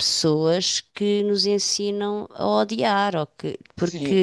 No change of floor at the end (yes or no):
no